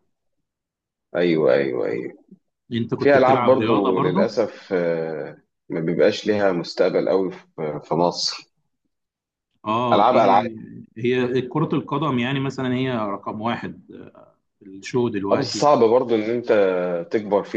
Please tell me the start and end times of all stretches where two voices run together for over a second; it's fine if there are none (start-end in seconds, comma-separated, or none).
3.0-4.3